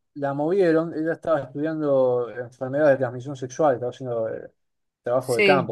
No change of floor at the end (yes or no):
yes